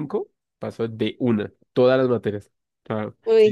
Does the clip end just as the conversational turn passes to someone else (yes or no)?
no